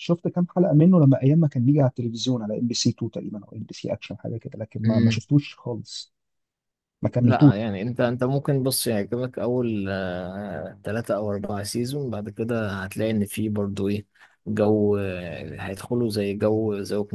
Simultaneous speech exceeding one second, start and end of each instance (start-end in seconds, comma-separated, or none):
none